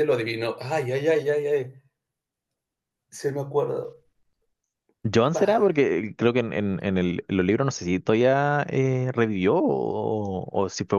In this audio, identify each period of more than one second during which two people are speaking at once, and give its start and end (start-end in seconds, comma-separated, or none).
none